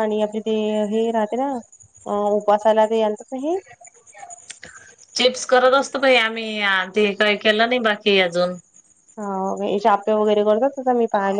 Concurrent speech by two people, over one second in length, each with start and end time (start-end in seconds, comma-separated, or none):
none